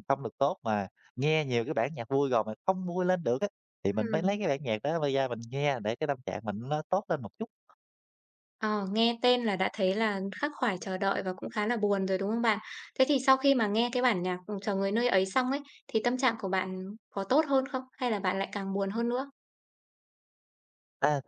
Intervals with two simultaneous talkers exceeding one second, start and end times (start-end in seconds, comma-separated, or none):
none